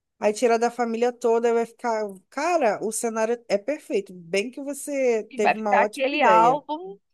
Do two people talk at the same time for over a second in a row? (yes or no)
yes